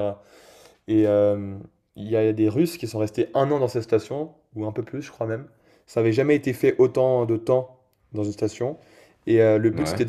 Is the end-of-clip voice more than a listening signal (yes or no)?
no